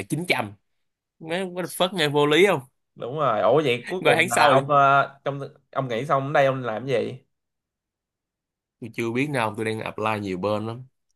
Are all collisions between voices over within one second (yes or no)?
yes